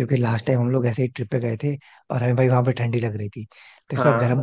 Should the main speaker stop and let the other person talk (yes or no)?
no